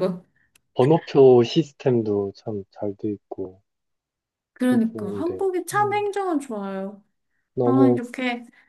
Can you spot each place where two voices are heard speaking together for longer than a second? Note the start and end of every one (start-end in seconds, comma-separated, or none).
4.6-6.1